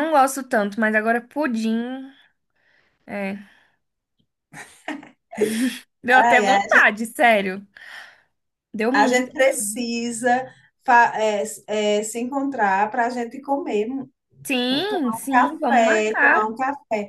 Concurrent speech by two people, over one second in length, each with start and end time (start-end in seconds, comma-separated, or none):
14.9-16.5